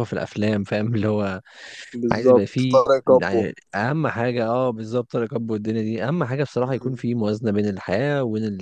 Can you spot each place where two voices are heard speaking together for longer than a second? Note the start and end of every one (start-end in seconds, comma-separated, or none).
2.1-3.5